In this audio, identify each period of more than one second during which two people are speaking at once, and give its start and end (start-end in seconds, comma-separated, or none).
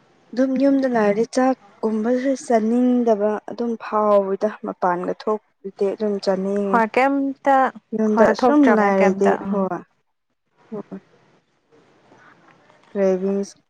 8.1-9.7